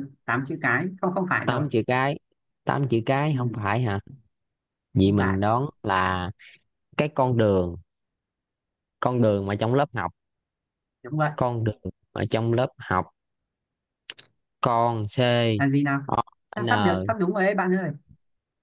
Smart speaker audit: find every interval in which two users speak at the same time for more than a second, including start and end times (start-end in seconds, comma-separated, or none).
none